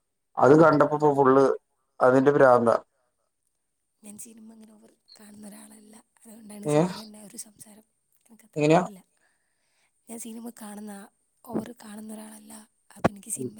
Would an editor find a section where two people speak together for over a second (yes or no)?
no